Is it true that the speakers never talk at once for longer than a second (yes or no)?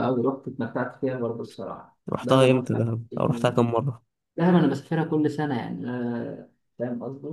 no